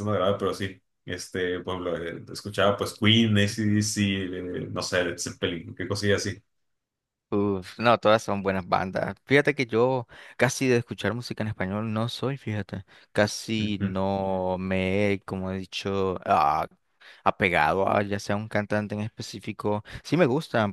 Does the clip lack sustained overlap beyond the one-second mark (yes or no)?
yes